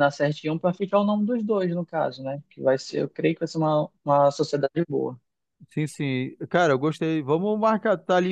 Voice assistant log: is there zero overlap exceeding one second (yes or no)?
yes